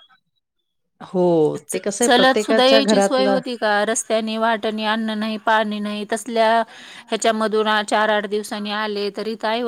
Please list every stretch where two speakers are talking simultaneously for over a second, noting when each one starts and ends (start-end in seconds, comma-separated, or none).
2.0-3.4